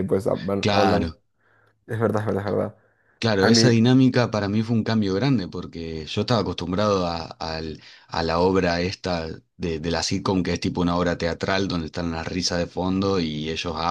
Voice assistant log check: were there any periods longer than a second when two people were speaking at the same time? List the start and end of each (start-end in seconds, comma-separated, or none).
none